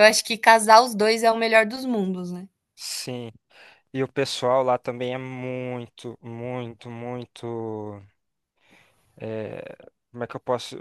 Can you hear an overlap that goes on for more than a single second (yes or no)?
no